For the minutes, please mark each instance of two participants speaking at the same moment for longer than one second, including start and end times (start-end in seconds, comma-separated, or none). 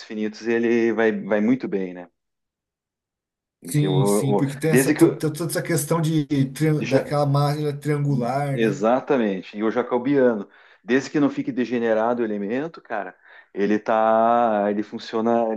3.6-5.2